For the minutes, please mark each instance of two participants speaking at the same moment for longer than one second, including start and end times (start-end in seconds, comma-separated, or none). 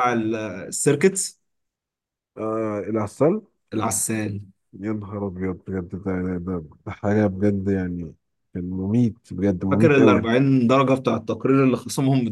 none